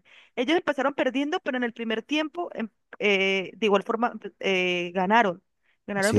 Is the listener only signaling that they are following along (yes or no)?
yes